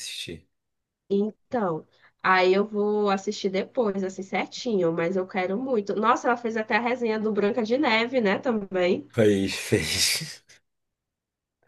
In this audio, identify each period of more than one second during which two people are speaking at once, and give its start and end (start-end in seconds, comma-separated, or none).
none